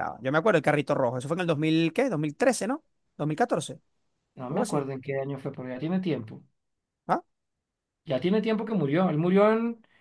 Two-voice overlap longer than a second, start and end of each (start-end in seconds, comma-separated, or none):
none